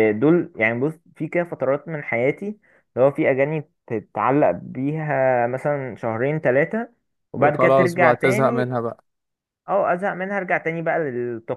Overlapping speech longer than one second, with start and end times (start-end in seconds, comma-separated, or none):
7.4-8.7